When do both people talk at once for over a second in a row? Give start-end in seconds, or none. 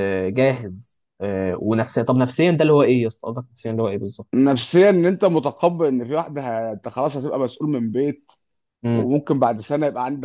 none